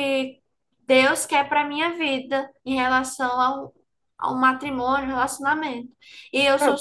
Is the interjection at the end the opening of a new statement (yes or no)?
no